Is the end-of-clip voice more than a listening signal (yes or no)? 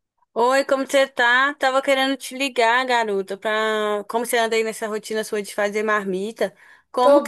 no